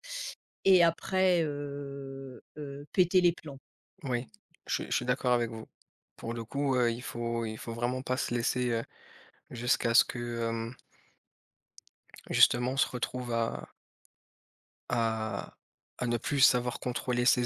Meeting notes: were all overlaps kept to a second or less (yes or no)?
yes